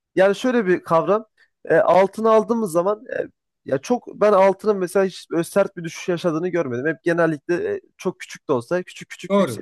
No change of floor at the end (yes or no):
no